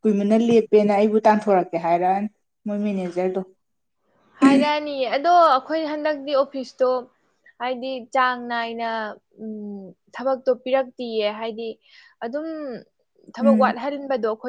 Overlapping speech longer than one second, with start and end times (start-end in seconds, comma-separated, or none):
none